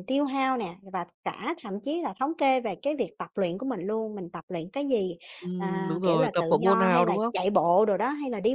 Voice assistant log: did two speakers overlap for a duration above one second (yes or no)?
yes